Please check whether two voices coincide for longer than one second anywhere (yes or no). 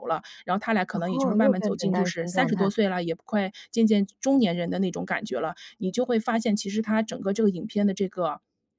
yes